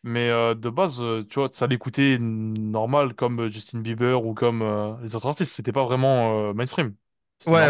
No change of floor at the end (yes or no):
no